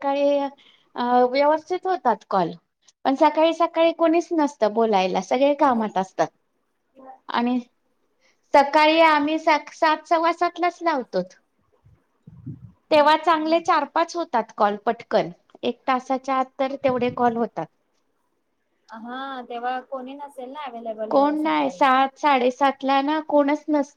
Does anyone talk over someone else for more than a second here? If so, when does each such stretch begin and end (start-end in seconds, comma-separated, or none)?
none